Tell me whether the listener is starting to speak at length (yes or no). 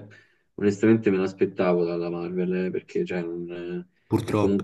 no